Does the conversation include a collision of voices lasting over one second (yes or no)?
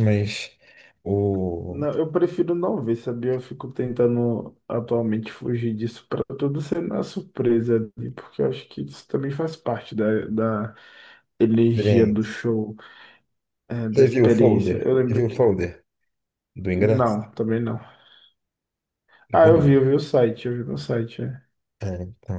yes